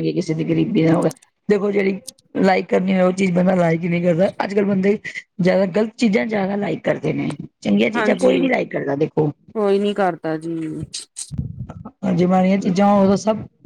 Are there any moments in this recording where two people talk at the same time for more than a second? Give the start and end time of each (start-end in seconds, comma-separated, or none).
none